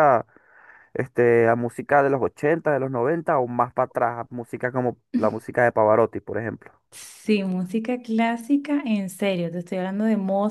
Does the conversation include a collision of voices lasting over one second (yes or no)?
no